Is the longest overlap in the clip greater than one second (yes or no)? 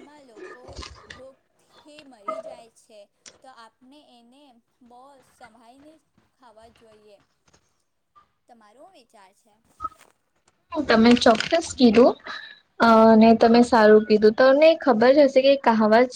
no